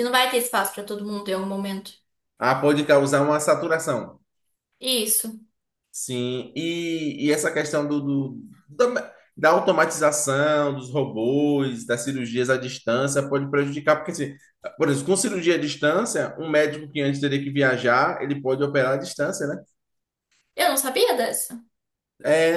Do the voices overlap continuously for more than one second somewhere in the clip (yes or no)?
no